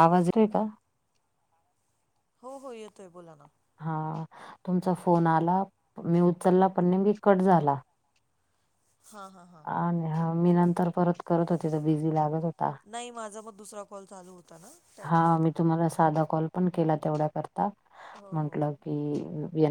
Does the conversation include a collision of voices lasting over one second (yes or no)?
no